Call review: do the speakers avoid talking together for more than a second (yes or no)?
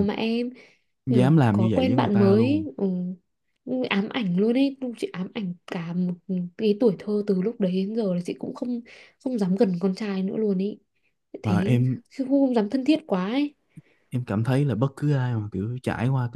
no